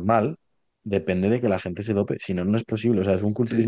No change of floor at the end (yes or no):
yes